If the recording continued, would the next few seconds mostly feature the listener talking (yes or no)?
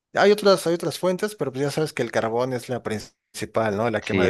no